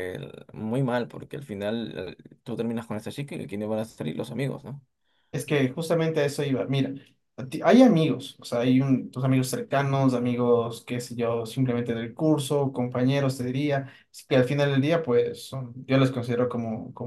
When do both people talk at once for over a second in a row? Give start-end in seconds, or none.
none